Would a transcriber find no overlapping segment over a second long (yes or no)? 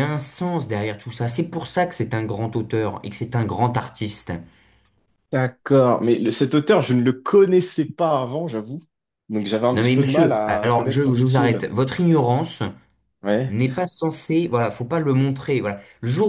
no